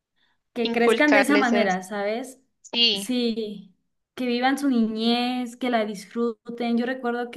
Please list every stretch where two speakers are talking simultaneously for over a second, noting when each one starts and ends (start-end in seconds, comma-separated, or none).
0.6-1.9